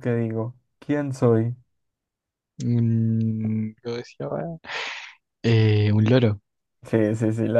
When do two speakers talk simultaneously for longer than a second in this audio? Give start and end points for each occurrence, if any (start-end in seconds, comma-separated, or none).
none